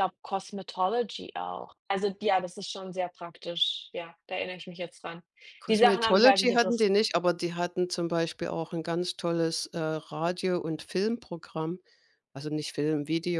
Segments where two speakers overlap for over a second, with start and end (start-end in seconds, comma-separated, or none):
5.7-6.9